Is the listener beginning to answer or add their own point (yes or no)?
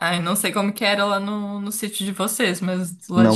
yes